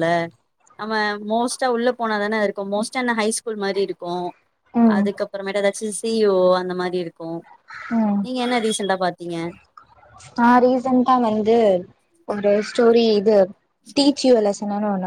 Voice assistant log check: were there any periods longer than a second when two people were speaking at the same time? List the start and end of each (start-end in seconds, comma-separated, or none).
none